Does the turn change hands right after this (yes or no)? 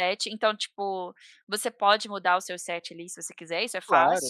yes